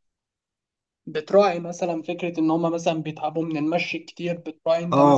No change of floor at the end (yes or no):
no